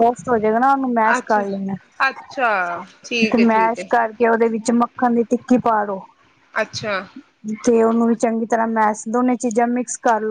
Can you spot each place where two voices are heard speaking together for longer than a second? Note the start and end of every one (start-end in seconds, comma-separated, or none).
none